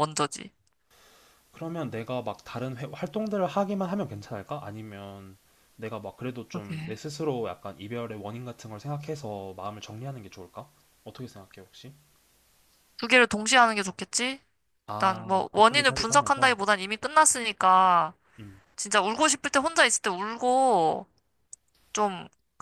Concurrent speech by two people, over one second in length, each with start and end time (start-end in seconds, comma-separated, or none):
14.9-16.5